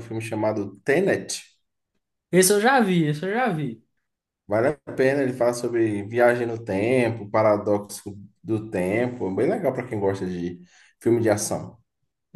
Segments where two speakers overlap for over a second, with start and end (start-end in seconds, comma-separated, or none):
none